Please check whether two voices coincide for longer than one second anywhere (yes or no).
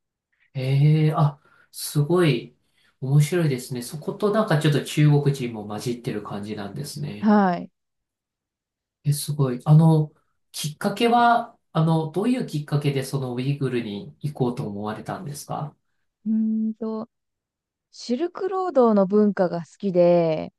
no